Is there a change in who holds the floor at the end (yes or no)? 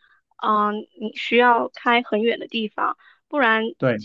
no